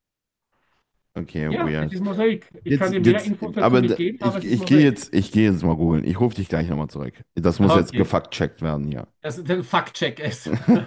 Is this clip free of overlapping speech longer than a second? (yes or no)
no